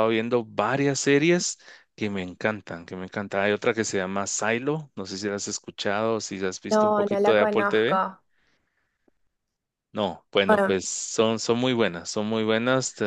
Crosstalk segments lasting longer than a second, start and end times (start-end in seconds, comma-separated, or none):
6.7-8.0